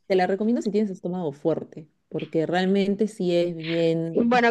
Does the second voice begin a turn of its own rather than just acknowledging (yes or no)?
yes